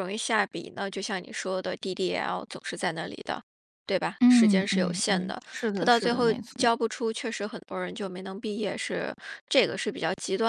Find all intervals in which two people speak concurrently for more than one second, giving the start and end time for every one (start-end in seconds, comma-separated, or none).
4.2-6.8